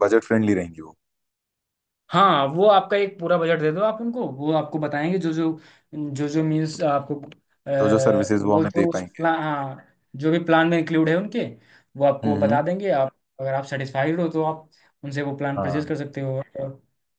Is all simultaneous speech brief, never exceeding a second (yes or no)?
no